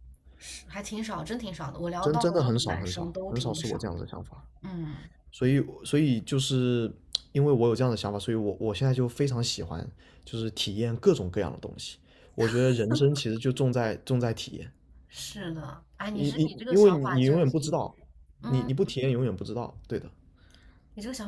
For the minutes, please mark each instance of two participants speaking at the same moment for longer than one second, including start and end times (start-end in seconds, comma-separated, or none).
2.0-4.0, 16.1-17.8